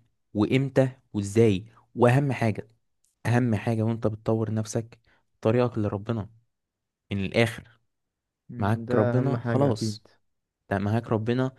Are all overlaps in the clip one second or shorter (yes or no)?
no